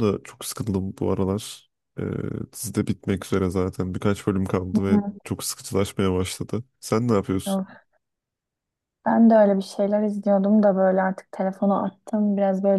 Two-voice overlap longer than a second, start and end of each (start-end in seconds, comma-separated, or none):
none